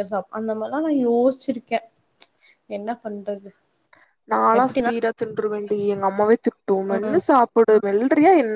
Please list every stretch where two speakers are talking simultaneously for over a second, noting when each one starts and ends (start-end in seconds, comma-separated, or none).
none